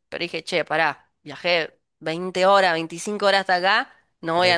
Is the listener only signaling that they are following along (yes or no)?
yes